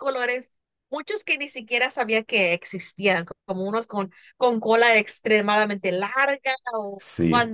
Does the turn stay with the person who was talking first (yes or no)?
yes